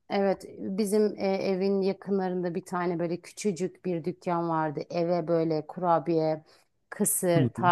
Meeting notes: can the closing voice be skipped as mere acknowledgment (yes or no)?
yes